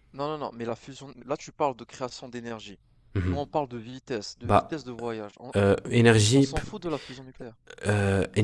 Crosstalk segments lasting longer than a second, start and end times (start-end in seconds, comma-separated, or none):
none